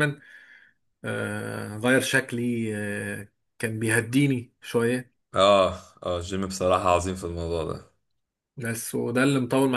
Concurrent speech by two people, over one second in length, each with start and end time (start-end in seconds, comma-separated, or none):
none